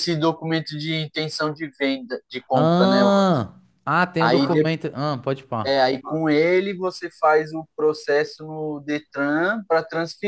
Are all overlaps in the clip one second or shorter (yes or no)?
yes